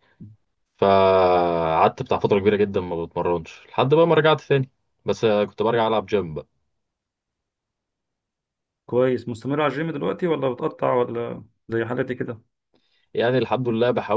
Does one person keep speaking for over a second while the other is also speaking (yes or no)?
no